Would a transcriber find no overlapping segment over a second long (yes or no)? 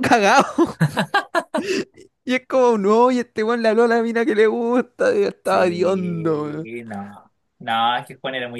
no